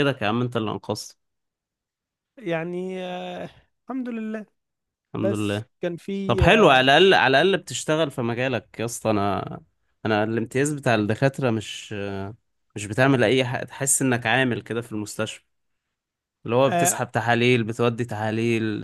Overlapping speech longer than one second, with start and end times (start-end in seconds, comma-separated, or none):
none